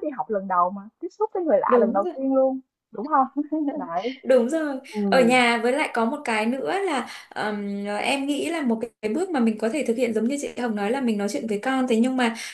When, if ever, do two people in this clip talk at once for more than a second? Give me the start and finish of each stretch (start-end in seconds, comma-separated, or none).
none